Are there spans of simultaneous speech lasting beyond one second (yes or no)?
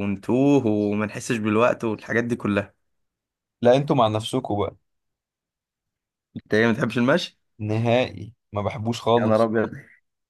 no